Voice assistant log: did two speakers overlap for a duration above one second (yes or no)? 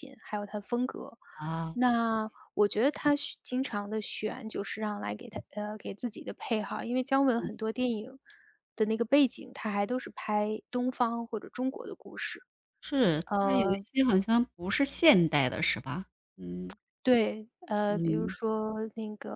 no